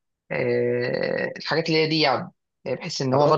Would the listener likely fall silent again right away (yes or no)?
yes